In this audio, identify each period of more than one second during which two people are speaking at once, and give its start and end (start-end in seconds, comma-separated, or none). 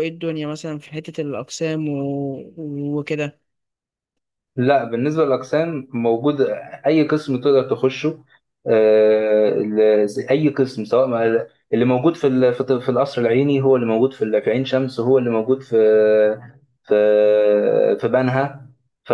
none